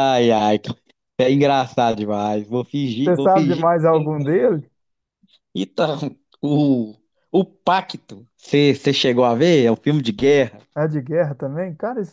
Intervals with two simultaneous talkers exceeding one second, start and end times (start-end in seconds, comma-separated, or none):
3.0-4.6